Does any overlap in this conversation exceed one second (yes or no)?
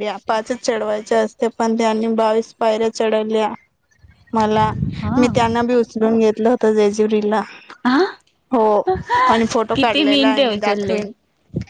yes